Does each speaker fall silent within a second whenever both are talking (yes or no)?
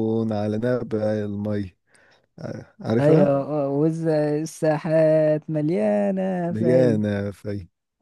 yes